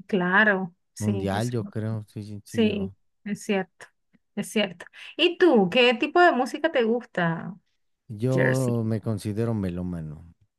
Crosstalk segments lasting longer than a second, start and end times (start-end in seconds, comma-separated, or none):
none